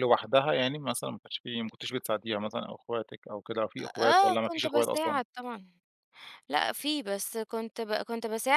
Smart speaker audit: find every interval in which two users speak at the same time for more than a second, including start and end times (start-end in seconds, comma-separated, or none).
4.0-5.2